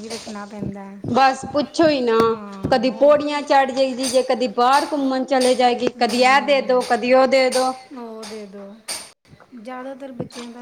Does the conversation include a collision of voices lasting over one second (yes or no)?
no